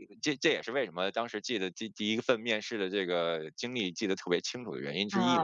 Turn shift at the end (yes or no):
yes